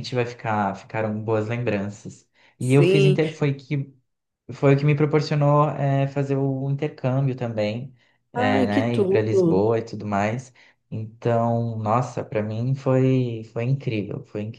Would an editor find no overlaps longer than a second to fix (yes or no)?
no